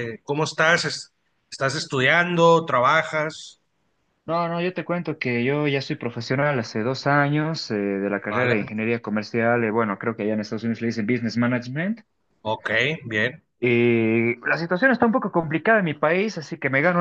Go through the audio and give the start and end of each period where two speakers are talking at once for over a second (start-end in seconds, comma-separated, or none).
none